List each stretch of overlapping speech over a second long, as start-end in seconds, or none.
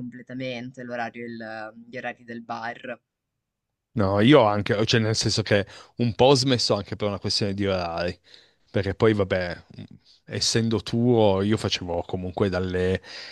none